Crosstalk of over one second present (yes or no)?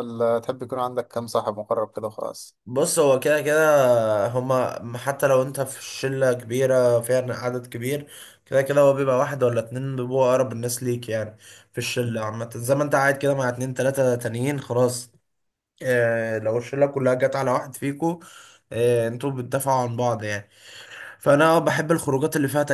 no